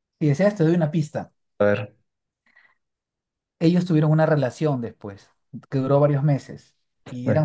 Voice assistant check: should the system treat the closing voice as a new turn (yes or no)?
no